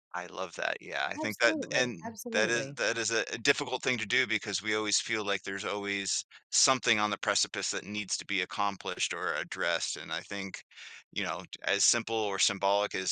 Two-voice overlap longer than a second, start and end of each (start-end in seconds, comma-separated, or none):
1.2-2.8